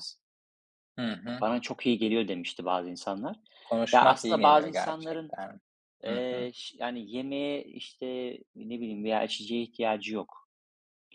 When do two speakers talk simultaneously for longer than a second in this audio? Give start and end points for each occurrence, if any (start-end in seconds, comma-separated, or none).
3.9-5.4